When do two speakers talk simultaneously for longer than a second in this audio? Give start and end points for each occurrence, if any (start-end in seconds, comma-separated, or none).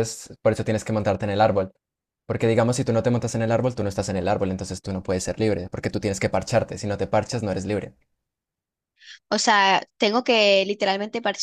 none